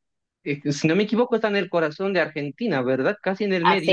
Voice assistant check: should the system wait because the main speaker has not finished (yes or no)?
no